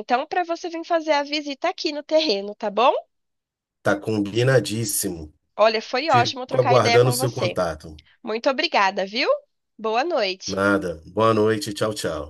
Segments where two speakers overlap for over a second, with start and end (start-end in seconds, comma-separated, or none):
6.1-7.6